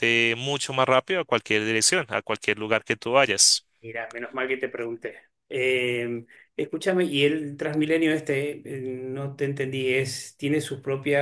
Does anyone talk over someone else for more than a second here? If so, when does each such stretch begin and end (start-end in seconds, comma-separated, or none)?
none